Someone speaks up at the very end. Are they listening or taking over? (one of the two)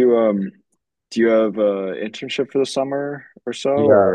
taking over